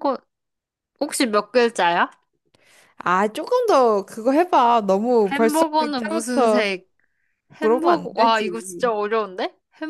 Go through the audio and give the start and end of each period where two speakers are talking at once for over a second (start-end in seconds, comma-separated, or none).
5.3-6.7, 7.6-8.9